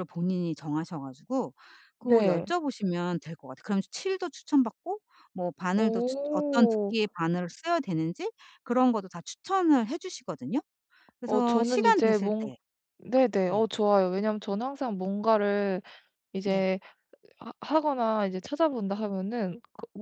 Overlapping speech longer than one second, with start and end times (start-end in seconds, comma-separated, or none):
5.8-7.0, 11.2-12.5